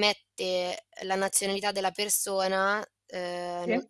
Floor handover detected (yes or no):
no